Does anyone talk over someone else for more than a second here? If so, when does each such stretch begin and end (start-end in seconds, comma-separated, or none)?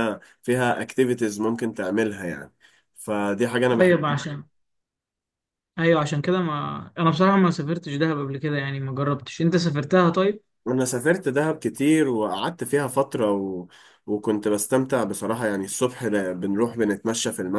none